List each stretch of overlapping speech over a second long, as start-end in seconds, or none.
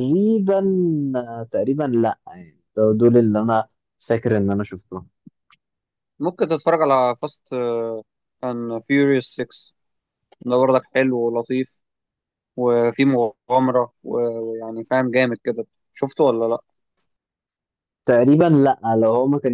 none